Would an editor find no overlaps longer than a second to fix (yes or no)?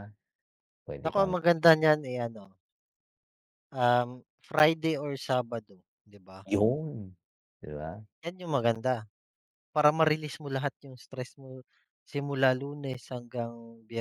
yes